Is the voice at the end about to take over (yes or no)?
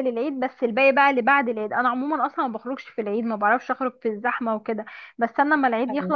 no